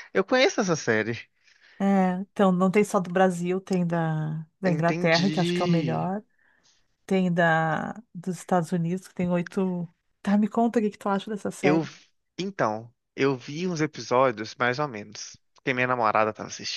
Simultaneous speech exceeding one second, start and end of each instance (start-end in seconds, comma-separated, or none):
4.7-6.1